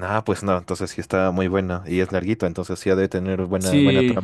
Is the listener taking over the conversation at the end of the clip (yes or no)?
yes